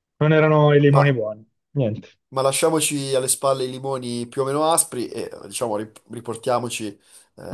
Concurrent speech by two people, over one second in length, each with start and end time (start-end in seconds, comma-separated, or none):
none